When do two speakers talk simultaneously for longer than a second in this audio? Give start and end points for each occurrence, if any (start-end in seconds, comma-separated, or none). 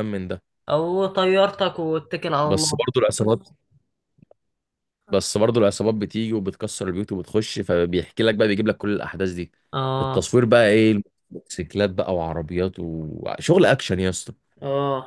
none